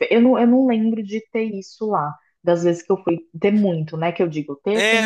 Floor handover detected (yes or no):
yes